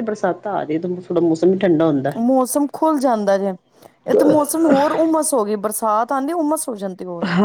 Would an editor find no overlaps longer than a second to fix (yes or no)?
yes